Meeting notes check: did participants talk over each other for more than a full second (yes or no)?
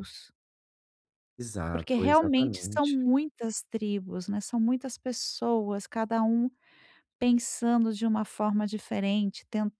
yes